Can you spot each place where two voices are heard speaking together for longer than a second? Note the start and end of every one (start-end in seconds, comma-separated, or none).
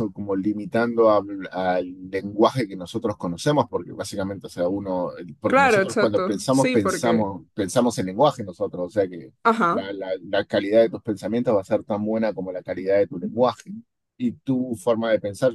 5.5-7.3